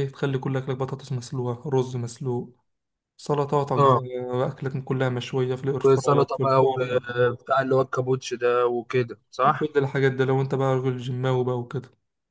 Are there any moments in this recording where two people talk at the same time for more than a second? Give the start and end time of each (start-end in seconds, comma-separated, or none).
5.8-7.0